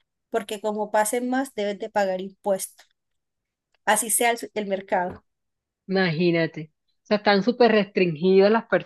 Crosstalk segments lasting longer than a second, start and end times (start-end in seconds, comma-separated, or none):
none